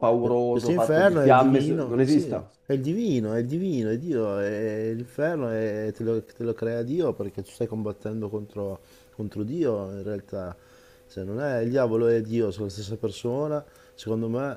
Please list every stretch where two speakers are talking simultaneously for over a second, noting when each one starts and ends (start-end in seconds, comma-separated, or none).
0.5-2.3